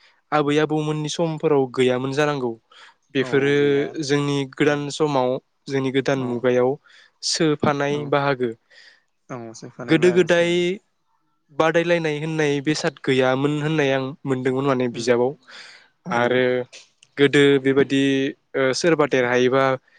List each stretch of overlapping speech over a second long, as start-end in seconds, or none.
none